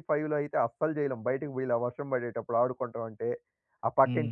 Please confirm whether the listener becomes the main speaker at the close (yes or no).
yes